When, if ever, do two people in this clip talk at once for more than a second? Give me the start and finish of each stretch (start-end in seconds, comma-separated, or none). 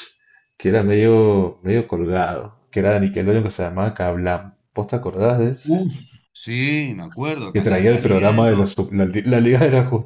7.5-8.7